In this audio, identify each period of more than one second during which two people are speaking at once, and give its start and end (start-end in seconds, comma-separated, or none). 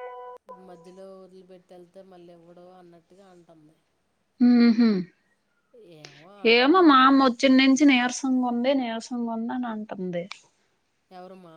none